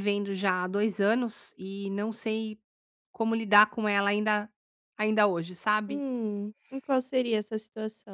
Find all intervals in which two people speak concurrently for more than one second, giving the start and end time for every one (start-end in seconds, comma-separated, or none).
none